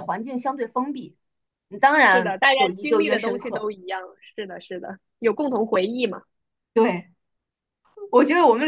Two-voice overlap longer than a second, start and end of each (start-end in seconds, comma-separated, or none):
2.0-3.6